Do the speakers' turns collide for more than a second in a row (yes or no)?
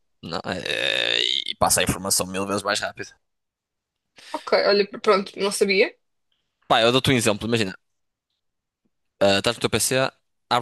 no